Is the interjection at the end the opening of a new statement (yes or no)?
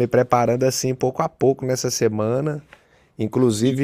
no